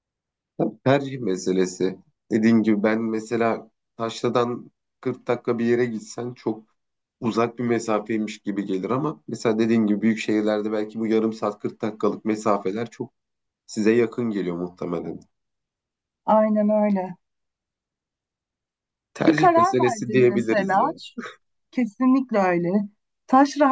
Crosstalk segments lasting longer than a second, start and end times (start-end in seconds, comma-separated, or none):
19.3-20.9